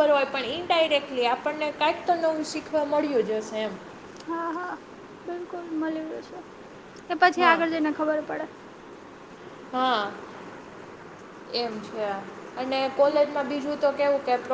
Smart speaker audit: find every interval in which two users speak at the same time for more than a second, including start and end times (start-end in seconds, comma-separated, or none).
none